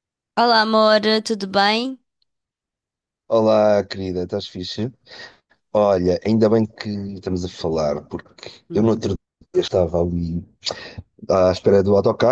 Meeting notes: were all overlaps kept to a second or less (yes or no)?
yes